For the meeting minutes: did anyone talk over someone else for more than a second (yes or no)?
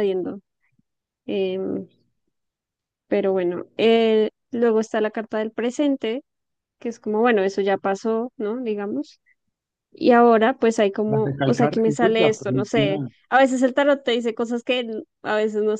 yes